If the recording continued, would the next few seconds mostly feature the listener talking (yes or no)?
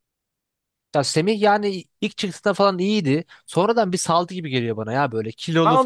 yes